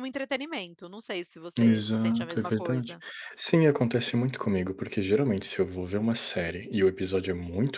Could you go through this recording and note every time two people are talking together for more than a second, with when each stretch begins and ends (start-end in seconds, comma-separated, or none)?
1.6-3.0